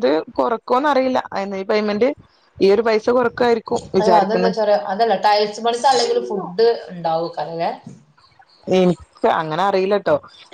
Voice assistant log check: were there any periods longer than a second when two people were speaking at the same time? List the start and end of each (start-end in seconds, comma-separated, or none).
none